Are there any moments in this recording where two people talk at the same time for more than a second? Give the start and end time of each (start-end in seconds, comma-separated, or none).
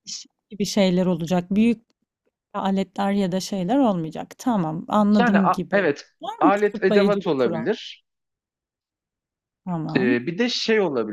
5.2-7.6